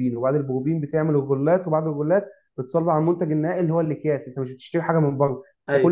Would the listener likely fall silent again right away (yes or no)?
yes